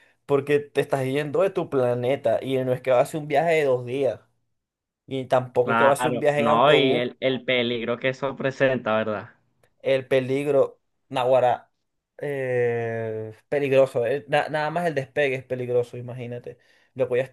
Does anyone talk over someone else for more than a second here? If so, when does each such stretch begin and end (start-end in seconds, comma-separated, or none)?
5.6-7.0